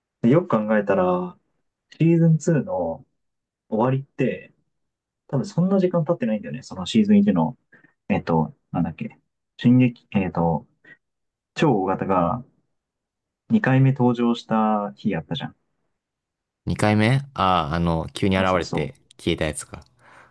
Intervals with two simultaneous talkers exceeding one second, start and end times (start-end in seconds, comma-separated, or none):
none